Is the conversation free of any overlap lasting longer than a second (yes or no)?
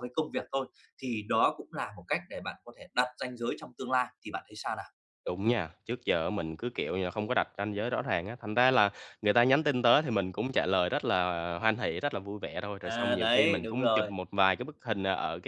no